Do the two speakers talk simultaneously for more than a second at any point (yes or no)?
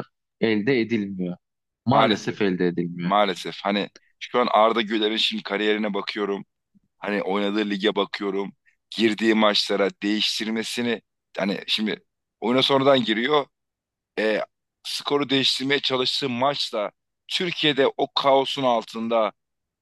no